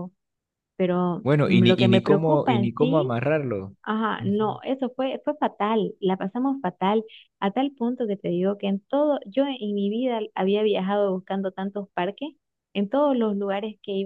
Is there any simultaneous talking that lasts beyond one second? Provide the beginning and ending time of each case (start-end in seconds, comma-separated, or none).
1.2-3.2